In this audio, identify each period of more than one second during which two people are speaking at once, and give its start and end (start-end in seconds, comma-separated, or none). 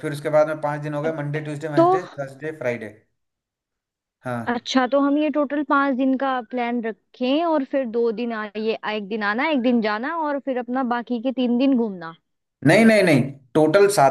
none